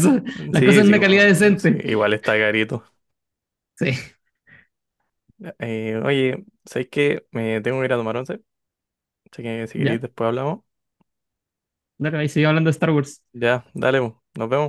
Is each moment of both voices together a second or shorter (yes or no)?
no